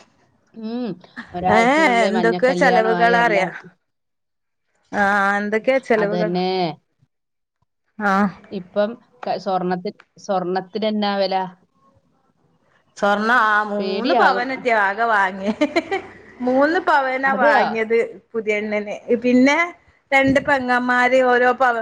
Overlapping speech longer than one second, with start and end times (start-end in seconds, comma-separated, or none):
1.6-3.5